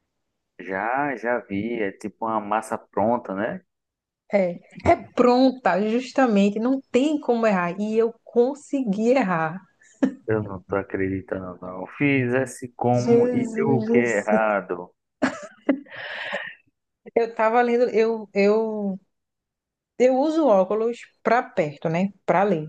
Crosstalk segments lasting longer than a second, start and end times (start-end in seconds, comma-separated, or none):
12.9-14.4